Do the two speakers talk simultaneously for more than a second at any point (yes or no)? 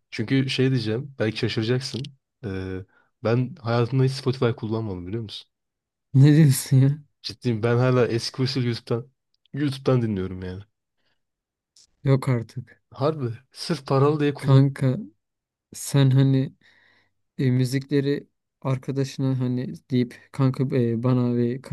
no